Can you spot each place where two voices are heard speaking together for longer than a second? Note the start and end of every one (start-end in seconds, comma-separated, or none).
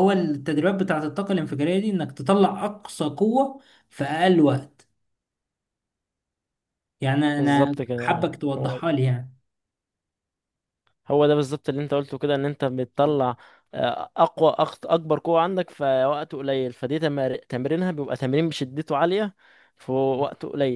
7.4-8.8